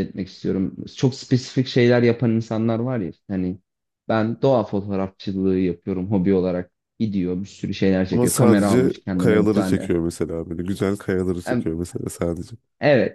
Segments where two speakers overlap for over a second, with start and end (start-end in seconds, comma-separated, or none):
8.1-9.9